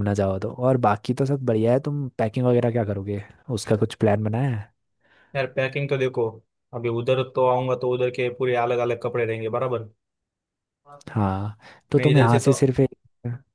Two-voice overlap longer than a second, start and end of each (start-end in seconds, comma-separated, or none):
none